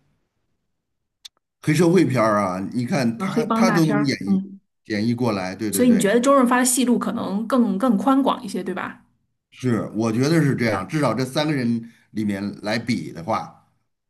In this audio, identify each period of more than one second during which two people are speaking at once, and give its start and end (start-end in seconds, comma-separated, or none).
3.2-4.4